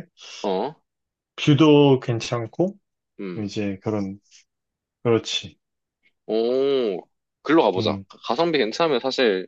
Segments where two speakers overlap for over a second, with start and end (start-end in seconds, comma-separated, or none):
none